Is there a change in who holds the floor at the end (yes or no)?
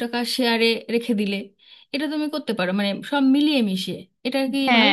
yes